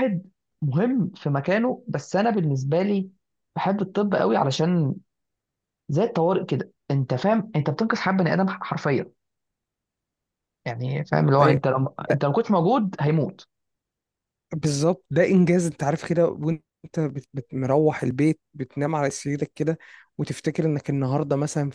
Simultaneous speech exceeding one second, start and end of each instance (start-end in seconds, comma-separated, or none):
none